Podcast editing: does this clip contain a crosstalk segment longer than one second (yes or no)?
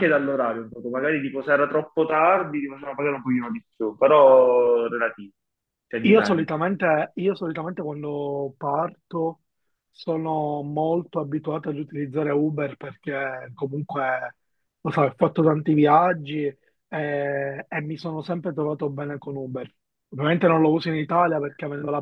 no